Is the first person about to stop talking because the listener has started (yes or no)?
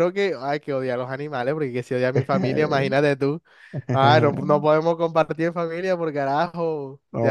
yes